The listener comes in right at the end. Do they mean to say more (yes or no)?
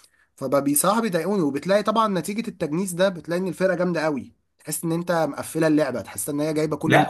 yes